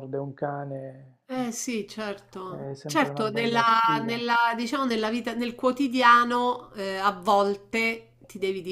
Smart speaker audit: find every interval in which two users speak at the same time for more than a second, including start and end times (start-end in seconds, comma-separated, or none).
2.5-4.2